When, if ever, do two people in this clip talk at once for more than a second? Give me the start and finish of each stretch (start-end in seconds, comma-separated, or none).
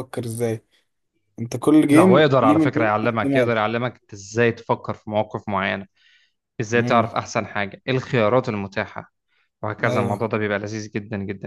1.9-3.6